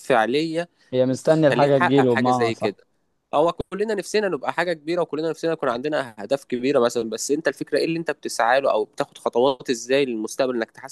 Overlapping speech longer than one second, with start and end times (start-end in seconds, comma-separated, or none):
1.2-2.8